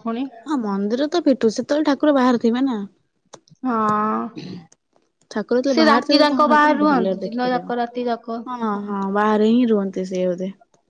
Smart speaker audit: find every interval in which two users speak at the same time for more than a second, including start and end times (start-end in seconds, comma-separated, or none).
5.7-7.6